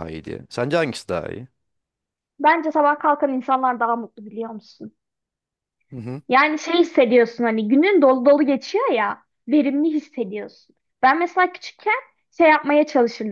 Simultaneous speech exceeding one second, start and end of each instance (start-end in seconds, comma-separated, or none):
none